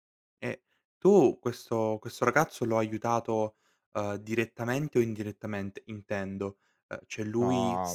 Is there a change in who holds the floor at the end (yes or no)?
no